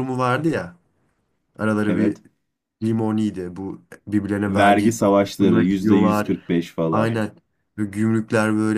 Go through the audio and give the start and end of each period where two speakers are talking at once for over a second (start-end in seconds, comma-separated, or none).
4.5-6.3